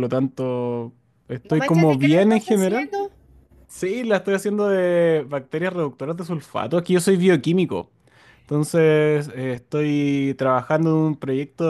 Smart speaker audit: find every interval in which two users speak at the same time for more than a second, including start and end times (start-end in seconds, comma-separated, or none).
1.5-2.9